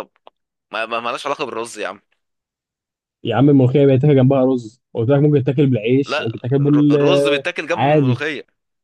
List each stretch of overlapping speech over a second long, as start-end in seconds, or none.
6.0-8.2